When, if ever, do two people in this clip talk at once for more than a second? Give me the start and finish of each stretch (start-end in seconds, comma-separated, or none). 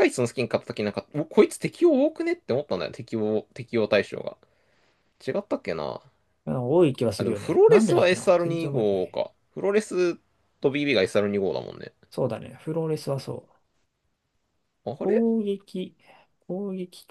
7.2-9.2